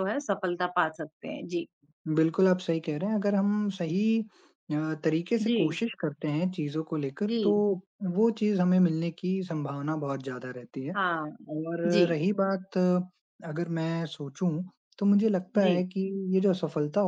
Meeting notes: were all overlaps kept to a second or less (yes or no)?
yes